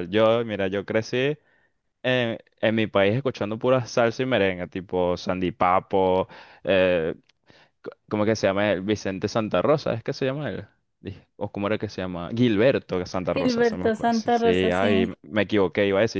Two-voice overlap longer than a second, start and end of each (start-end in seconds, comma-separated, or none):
13.3-15.1